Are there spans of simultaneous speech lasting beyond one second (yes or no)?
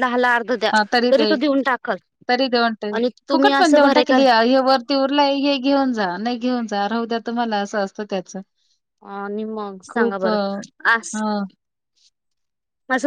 no